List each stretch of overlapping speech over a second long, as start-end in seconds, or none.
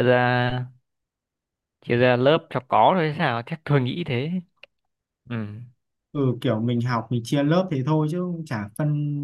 none